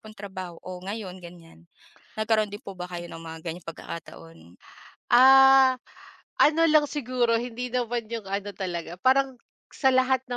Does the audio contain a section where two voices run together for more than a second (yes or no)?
no